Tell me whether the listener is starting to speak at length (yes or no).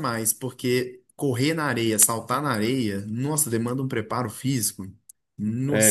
yes